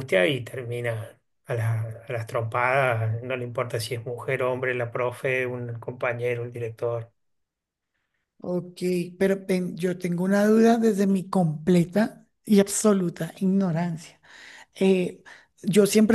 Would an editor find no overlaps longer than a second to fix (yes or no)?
yes